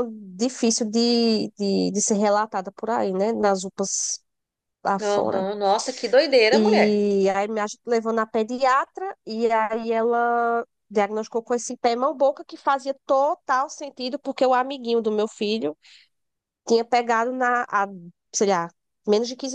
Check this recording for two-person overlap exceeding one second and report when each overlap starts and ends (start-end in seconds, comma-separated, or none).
none